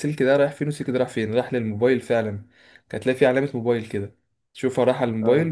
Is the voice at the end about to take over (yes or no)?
no